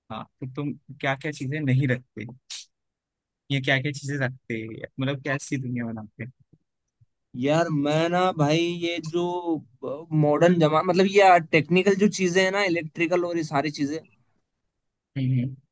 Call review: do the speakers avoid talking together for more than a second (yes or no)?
yes